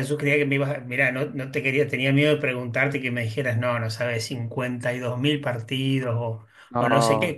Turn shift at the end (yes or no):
no